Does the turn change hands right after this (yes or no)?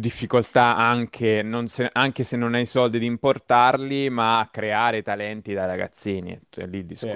yes